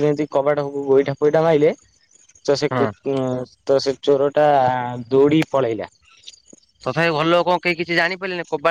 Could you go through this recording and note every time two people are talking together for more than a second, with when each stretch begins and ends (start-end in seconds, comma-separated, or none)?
none